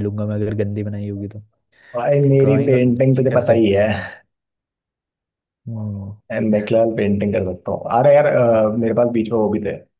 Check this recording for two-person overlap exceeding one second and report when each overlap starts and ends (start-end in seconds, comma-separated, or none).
2.4-3.9